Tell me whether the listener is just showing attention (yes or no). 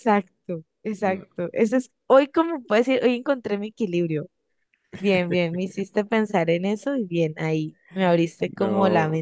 no